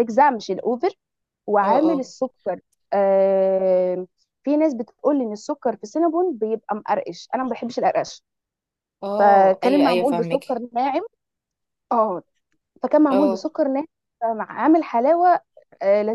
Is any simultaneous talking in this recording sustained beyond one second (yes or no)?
yes